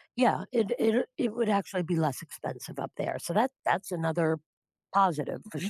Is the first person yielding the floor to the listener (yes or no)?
yes